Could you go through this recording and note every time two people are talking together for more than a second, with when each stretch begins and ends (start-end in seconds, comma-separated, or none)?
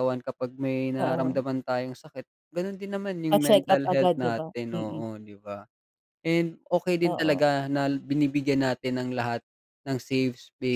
3.3-5.0